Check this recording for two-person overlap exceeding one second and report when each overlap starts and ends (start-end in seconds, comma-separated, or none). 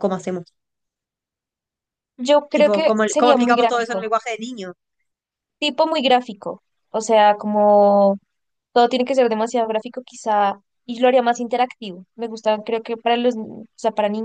2.5-4.0